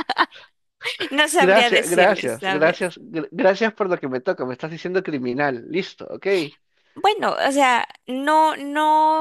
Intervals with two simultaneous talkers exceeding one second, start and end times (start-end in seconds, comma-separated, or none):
1.4-2.9